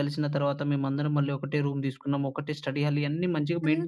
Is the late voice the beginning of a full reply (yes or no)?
yes